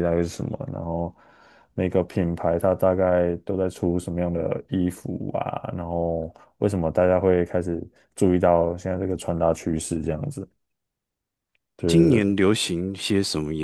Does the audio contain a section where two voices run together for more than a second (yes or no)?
no